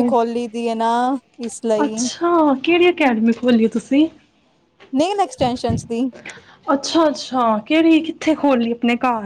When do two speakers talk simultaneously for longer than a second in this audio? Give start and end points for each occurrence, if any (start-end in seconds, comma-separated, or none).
none